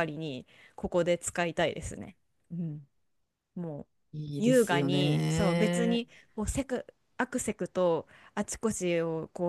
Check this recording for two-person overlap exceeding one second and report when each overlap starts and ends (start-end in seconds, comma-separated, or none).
4.4-6.0